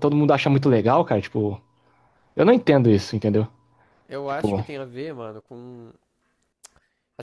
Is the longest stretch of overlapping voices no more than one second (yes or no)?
yes